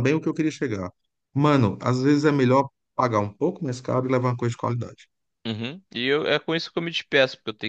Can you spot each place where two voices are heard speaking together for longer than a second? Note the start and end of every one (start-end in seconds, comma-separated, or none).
none